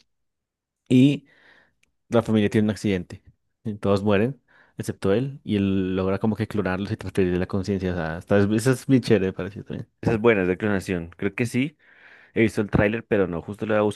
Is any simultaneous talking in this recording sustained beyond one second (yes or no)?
no